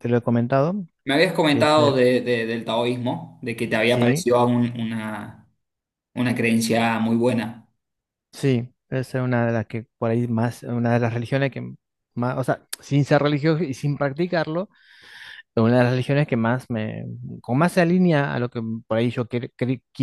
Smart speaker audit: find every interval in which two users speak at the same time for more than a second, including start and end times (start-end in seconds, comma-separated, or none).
none